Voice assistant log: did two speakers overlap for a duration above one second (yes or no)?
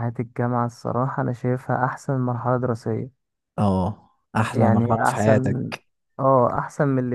yes